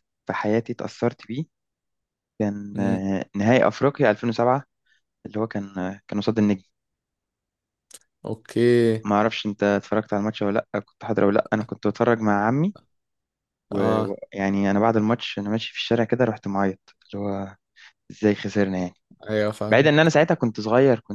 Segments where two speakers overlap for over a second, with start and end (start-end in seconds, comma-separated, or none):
none